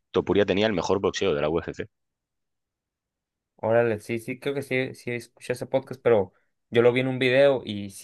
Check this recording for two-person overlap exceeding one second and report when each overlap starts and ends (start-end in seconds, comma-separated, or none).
none